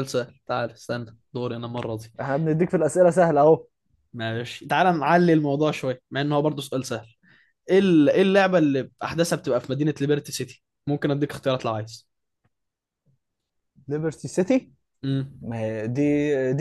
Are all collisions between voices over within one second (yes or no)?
yes